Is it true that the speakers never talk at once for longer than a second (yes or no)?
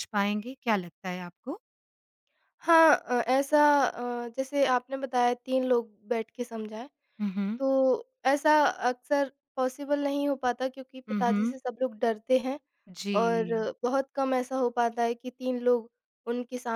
yes